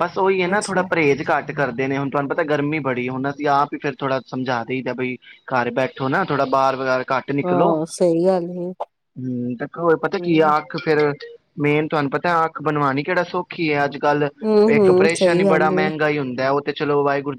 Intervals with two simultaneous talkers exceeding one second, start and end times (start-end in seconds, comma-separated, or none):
14.7-16.0